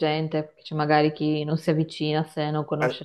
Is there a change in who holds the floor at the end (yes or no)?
yes